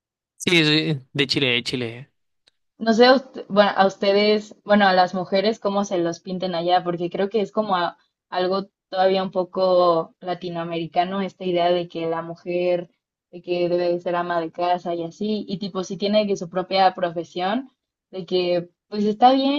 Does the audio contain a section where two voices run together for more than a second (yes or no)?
no